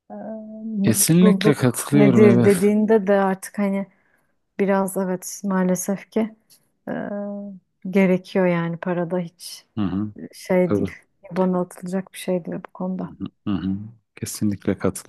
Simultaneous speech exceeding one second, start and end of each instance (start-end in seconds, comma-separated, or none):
0.8-2.6